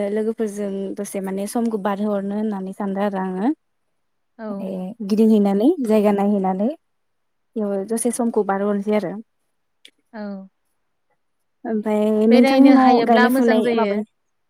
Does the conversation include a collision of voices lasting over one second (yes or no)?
yes